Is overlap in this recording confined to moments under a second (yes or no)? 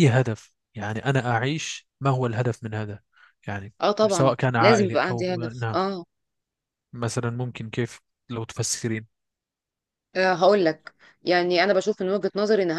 no